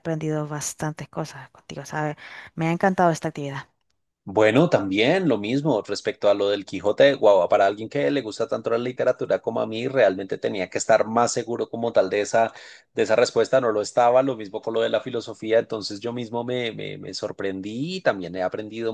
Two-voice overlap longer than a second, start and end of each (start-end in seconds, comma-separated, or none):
none